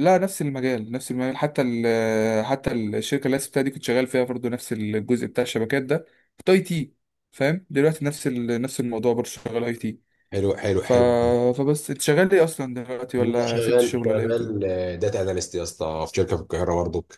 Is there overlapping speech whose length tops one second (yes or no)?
yes